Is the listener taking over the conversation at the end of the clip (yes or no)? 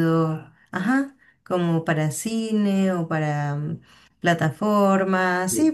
yes